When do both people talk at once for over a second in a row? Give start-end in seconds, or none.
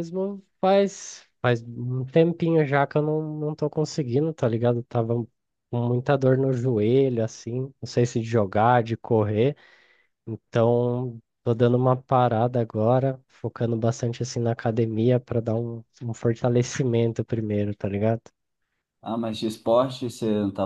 none